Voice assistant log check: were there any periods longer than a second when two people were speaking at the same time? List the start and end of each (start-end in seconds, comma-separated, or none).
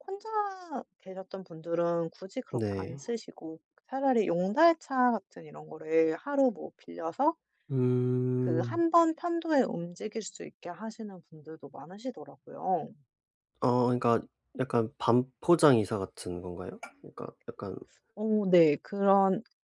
none